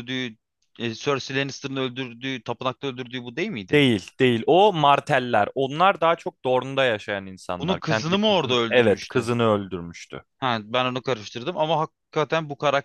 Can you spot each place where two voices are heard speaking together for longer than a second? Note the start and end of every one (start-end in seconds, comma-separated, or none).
7.6-9.3